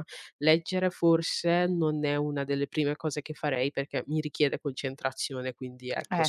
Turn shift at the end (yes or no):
no